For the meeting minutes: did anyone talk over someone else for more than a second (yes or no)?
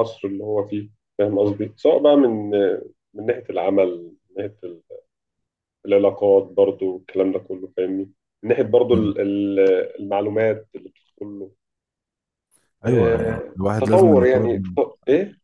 yes